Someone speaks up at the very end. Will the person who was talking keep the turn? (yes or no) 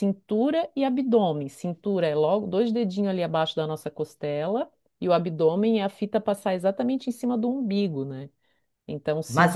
no